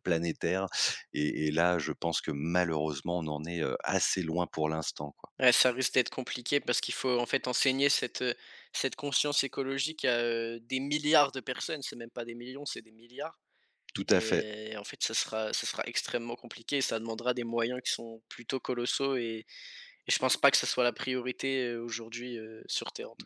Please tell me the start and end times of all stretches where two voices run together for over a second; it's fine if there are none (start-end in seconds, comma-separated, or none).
none